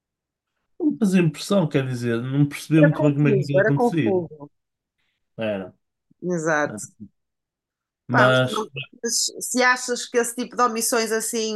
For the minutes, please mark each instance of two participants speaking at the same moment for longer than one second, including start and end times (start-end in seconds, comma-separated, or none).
2.8-4.2